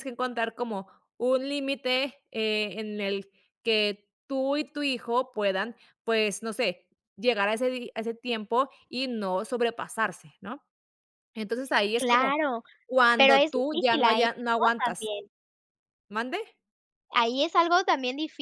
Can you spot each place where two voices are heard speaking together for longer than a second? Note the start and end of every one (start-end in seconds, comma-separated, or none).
13.2-15.1